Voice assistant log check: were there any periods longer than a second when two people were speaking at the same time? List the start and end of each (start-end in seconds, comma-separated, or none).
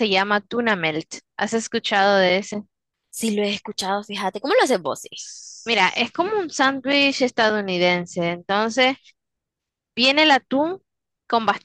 none